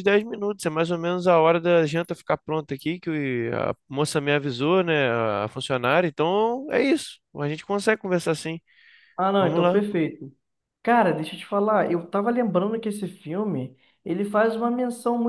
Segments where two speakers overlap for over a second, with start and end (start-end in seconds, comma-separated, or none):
none